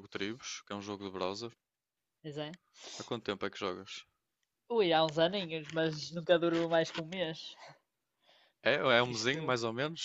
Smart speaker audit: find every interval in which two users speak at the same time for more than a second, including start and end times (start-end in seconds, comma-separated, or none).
none